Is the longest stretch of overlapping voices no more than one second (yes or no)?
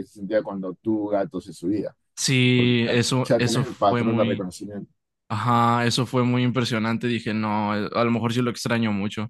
no